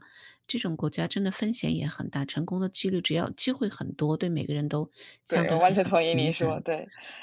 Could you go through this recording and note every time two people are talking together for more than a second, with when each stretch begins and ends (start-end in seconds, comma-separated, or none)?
5.3-6.6